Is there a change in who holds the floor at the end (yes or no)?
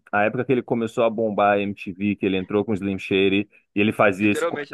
no